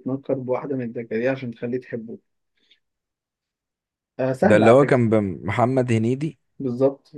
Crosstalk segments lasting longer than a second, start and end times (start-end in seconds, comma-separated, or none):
none